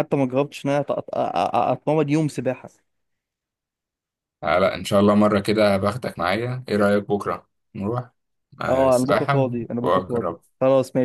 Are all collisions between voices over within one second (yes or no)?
no